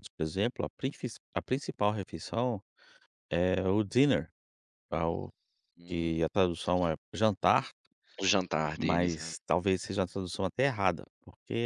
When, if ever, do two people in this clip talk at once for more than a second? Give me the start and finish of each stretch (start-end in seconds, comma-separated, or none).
none